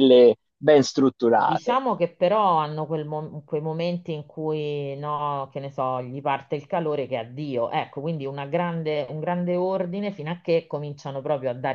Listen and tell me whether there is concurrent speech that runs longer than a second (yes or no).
no